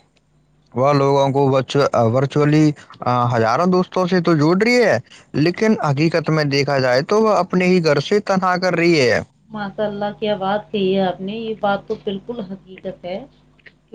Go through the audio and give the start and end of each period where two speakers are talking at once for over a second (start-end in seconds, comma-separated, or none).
none